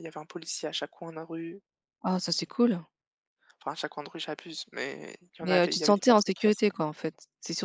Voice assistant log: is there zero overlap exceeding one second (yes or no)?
no